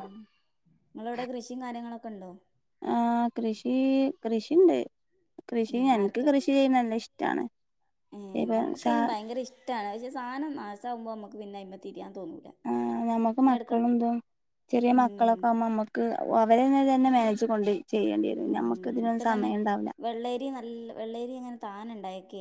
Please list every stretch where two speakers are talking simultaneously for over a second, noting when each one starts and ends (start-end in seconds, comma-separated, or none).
none